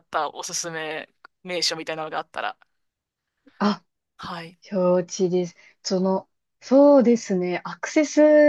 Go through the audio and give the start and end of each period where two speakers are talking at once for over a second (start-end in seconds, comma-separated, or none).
none